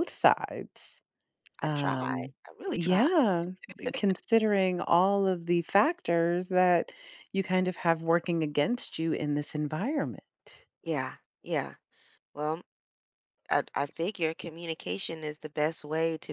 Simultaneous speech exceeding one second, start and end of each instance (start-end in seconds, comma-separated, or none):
1.6-3.1